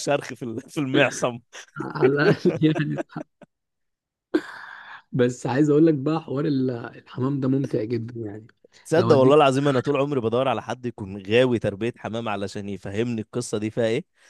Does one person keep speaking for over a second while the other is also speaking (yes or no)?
no